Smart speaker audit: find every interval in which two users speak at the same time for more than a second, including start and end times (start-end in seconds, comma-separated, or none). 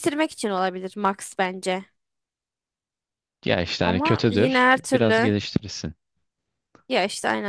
3.8-5.3